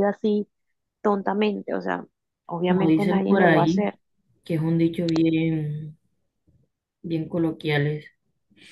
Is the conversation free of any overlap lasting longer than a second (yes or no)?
no